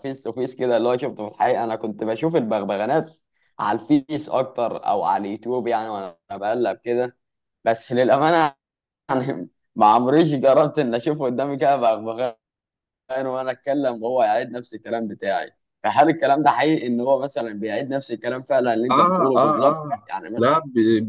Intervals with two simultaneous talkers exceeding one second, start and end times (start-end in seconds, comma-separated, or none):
18.9-20.5